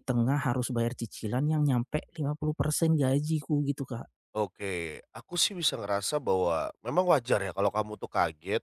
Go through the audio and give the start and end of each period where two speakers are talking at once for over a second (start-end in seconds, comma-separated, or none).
none